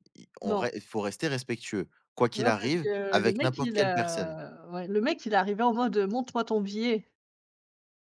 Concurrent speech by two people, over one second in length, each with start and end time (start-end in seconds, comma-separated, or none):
2.4-4.4